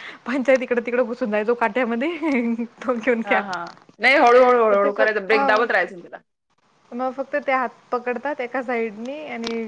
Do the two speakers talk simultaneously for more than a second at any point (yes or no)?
no